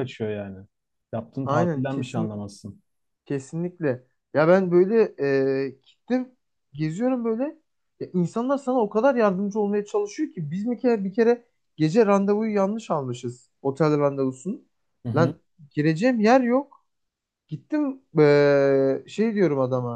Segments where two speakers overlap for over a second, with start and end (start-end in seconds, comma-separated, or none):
none